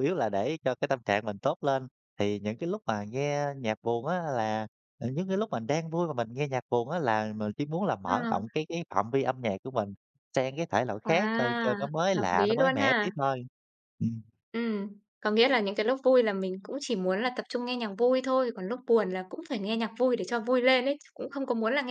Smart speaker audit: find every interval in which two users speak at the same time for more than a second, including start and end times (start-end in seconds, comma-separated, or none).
11.0-13.1